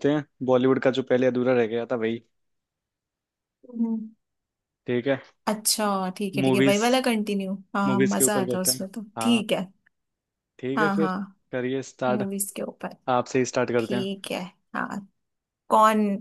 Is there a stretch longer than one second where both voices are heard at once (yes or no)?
yes